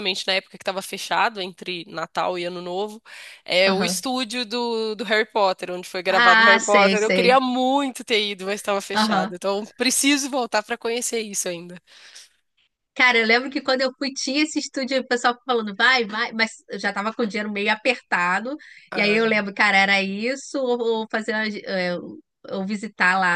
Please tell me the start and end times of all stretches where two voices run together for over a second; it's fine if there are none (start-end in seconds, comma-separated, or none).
6.1-7.4